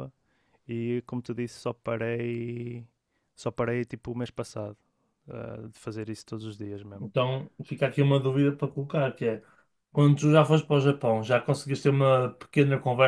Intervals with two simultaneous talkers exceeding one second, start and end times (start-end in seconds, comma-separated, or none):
none